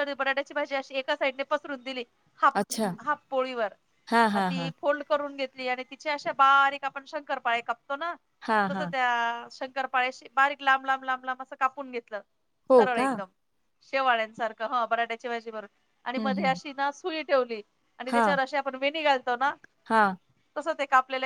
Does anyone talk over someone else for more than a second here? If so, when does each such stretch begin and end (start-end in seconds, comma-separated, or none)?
none